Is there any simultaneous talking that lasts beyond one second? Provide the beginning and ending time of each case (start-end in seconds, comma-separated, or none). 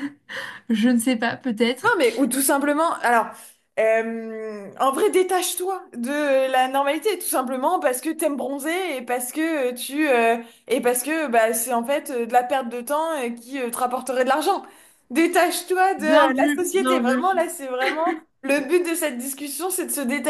none